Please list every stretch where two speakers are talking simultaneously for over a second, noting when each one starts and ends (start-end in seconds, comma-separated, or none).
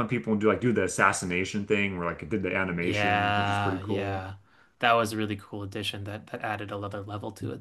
2.8-4.2